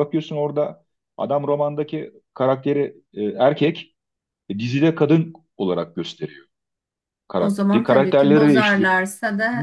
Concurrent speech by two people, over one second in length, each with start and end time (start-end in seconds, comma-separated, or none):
7.3-8.9